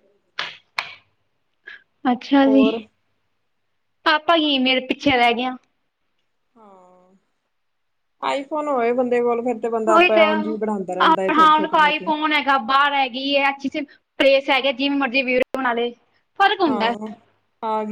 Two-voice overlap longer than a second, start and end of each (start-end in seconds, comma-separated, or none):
9.9-12.1